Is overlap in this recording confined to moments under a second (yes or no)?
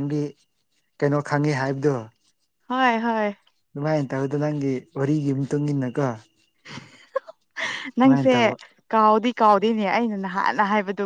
yes